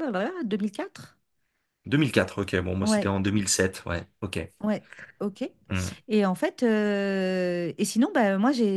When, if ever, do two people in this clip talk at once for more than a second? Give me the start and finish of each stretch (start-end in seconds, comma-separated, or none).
none